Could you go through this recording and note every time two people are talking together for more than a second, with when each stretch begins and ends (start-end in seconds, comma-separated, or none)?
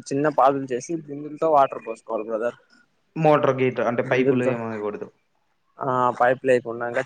none